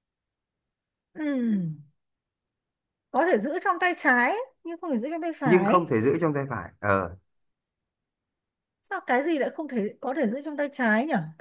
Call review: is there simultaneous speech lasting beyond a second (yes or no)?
no